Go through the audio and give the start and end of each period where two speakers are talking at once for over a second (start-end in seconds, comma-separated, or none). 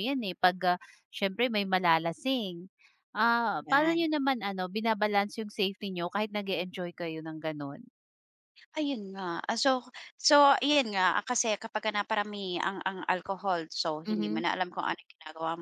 none